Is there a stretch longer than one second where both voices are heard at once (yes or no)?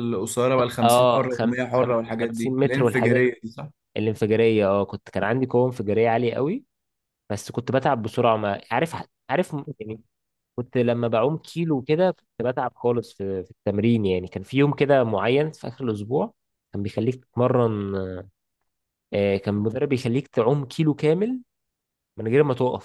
yes